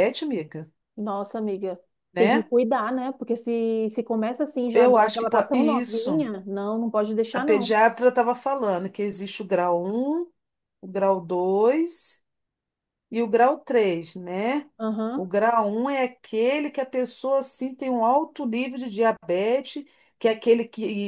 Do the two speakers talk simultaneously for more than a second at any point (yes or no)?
yes